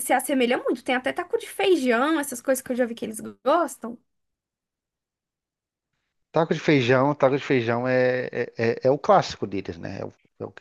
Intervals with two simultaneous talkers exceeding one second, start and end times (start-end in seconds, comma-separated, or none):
none